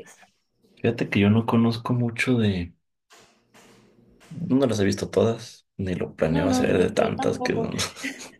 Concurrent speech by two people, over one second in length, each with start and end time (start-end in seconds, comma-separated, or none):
6.3-7.7